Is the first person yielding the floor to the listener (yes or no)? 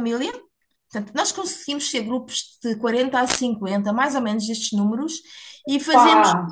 no